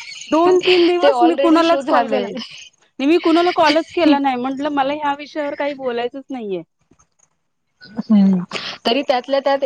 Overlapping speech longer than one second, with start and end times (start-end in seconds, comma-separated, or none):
1.0-2.3